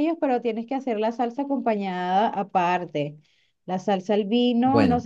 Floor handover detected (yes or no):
no